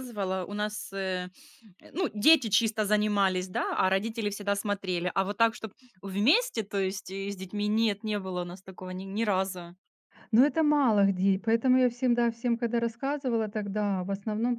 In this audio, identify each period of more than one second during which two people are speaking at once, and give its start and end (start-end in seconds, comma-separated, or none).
none